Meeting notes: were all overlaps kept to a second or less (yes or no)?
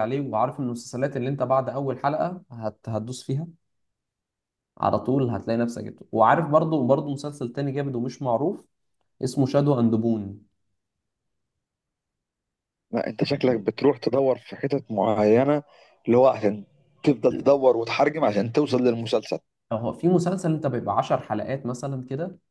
yes